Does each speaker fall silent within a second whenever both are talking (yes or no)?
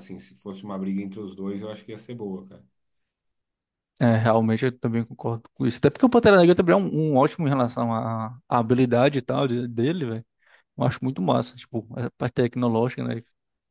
yes